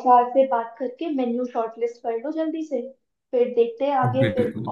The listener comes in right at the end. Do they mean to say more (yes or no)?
no